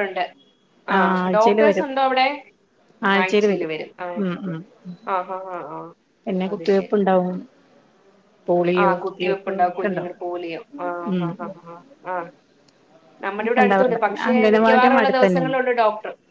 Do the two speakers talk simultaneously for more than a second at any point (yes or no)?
yes